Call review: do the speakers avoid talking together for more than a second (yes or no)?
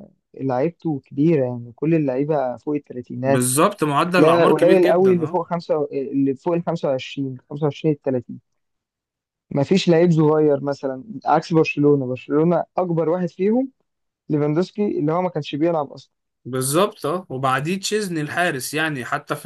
no